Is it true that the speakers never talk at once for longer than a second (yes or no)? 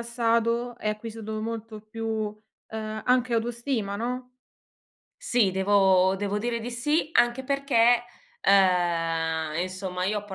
yes